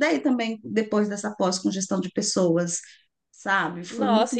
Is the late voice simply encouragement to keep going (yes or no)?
no